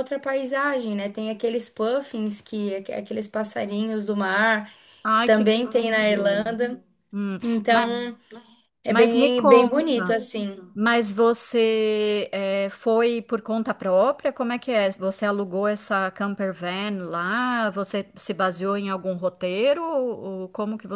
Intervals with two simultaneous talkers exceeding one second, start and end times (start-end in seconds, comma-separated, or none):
5.1-6.6, 8.9-10.2